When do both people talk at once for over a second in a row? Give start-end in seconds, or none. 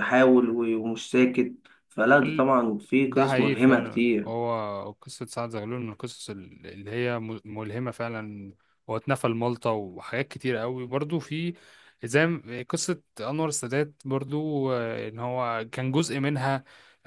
3.0-4.3